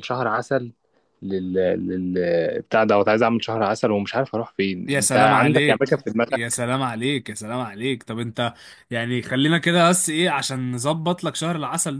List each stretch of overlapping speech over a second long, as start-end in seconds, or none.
4.9-6.6